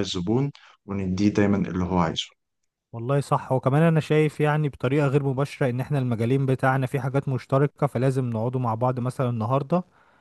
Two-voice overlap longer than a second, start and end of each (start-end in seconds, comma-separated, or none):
none